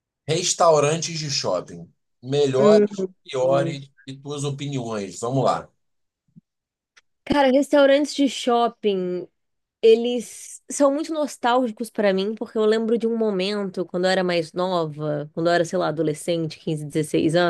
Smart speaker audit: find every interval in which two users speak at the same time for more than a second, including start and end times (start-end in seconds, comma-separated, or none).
2.6-3.9